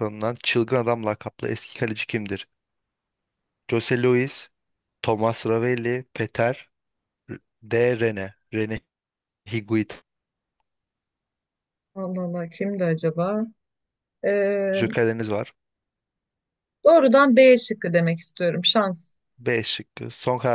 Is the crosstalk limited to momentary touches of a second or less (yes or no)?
yes